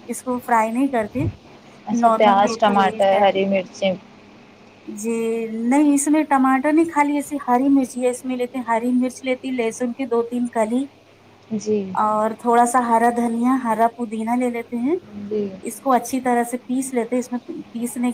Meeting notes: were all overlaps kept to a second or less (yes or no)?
no